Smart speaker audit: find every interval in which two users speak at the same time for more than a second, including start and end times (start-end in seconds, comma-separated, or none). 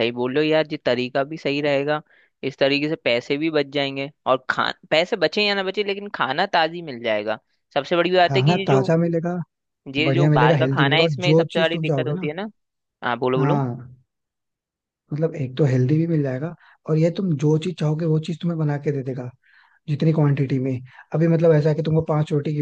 10.1-12.3